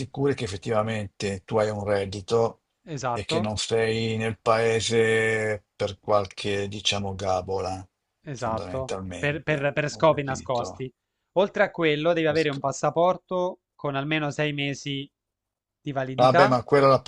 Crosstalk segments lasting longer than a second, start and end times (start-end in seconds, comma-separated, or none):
8.3-10.8